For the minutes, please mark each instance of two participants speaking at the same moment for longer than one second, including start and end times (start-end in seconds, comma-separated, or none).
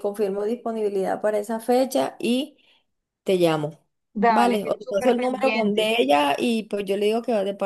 4.3-5.9